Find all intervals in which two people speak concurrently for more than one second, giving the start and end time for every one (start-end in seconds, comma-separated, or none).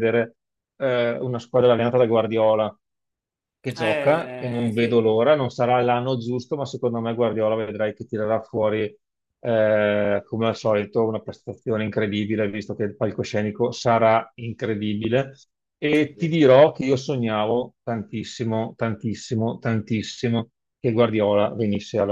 3.8-5.0